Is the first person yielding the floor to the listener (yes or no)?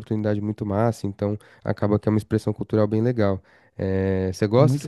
no